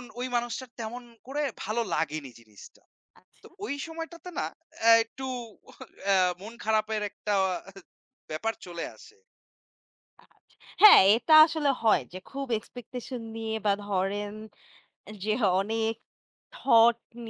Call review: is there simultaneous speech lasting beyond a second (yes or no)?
no